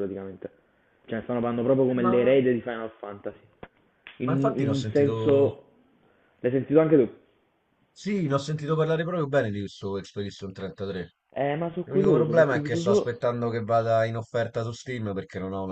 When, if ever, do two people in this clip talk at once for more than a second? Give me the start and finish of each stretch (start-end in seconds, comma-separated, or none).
4.2-5.5, 11.8-13.2